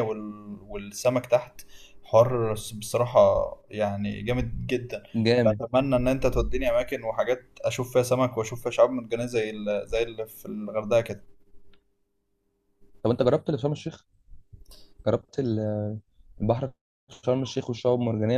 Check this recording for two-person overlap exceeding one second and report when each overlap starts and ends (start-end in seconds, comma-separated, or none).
none